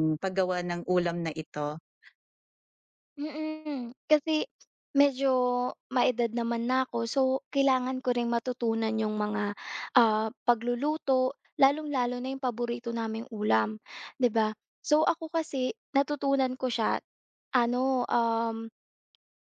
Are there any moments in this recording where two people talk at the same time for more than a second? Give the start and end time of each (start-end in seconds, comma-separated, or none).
none